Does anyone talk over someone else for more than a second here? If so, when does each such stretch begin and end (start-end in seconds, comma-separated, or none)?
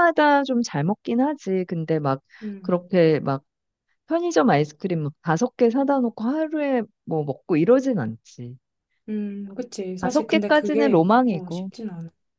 10.0-11.7